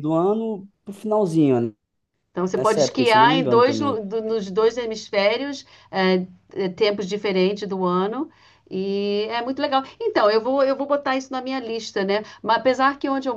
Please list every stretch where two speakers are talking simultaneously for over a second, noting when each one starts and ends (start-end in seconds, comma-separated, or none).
2.6-4.0